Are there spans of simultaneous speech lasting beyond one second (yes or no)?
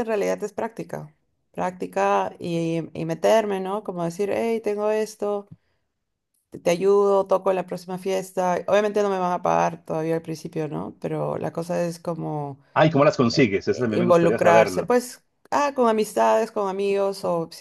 yes